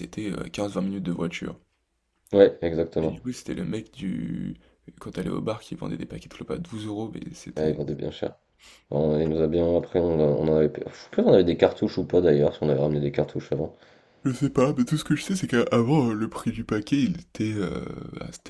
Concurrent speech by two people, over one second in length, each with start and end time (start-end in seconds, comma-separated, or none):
none